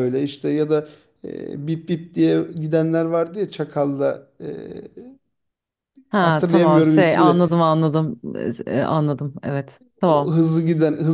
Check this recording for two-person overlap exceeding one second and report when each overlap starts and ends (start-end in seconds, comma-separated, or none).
6.2-7.4